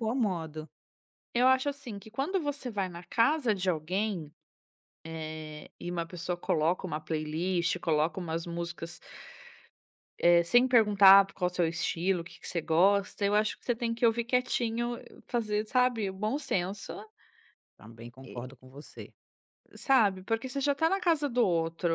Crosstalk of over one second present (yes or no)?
no